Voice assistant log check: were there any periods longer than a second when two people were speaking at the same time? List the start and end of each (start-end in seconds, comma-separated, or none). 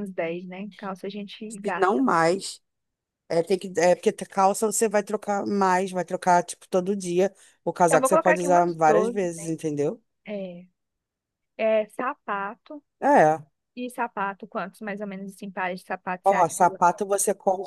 7.9-9.5